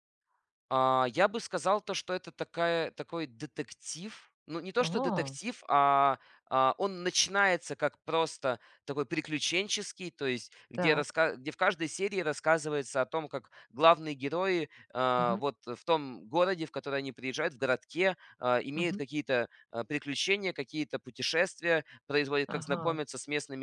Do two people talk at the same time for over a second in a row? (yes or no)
no